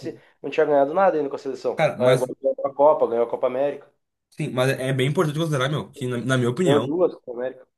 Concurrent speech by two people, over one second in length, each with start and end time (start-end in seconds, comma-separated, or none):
none